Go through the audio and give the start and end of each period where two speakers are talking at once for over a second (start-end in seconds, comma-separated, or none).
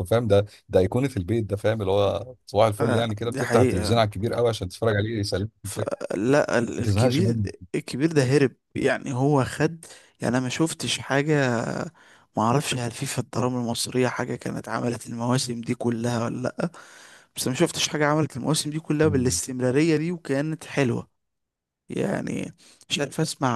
2.8-4.0